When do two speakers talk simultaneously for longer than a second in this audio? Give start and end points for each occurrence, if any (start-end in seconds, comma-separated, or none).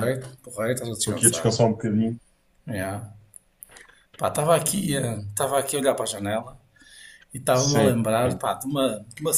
none